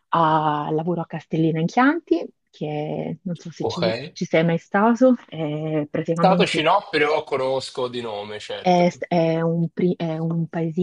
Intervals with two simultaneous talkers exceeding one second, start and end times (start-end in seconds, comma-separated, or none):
none